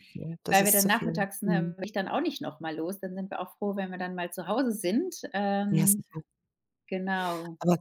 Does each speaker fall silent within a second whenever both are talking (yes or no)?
no